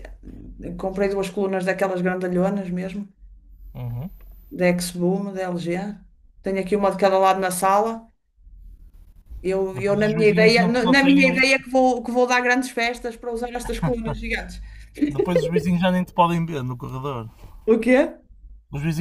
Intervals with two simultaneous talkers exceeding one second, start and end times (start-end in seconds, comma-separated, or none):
9.7-11.4